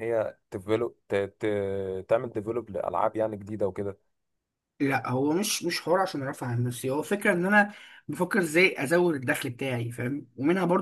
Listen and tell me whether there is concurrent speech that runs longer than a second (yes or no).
no